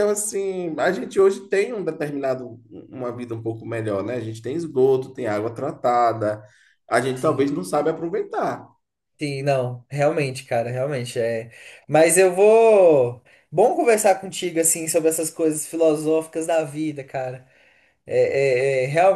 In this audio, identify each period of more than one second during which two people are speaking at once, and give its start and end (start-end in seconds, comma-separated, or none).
none